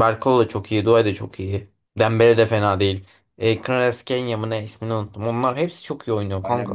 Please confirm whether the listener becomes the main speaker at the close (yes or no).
yes